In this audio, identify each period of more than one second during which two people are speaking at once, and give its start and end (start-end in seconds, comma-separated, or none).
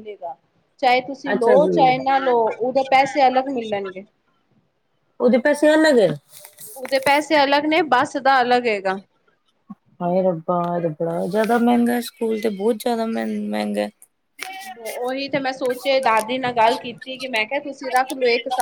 none